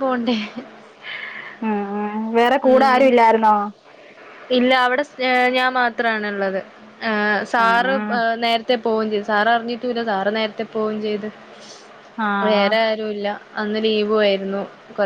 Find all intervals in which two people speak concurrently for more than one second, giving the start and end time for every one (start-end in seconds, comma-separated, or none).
none